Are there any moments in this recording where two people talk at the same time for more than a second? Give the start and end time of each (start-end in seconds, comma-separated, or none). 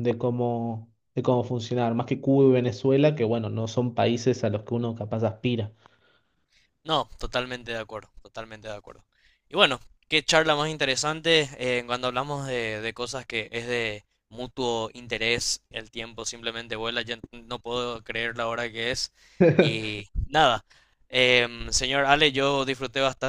none